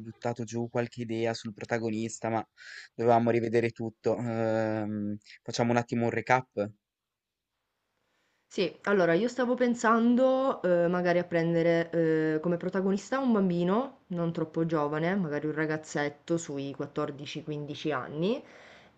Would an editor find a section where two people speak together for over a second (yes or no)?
no